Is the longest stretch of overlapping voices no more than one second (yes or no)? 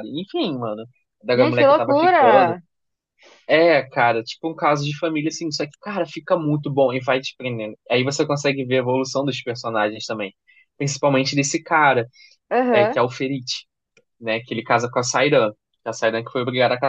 no